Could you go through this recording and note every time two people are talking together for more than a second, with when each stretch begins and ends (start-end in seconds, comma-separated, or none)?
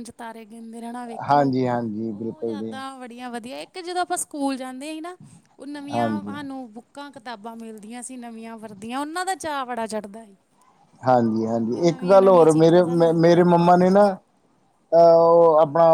11.7-13.6